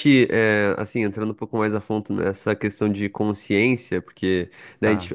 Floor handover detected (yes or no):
no